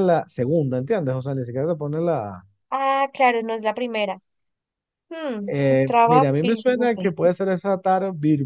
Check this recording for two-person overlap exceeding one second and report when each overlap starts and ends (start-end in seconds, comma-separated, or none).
5.5-7.1